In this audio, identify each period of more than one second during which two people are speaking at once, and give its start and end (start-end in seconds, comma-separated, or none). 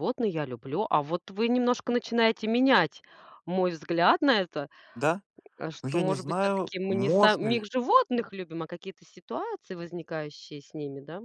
5.8-7.7